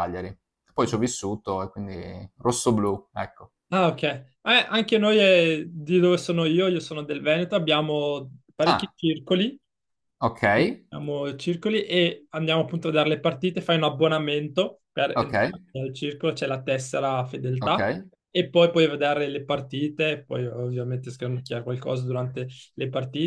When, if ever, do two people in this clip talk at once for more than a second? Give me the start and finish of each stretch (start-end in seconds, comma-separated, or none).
none